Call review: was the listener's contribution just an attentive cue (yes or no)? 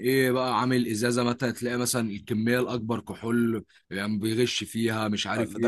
no